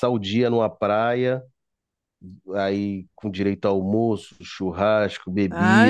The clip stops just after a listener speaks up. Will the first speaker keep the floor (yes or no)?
no